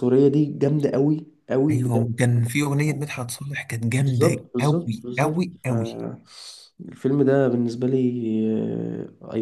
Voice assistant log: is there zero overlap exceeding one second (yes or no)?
no